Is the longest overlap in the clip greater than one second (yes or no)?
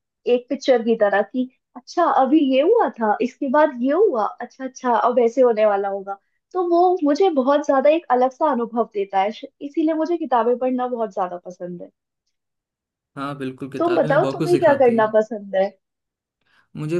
yes